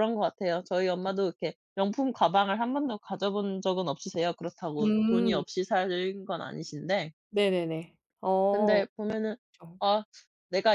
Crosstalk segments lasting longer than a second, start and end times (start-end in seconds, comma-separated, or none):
none